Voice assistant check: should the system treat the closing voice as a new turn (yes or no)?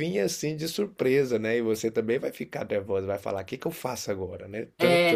yes